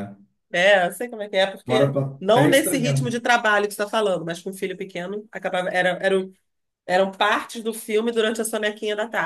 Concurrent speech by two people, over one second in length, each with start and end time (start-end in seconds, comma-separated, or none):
1.7-3.2